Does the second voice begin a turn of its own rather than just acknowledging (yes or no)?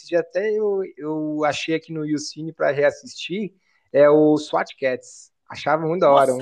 yes